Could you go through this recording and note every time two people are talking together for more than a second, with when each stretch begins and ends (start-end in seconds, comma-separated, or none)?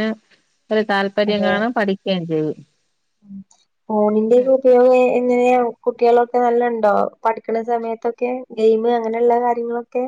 none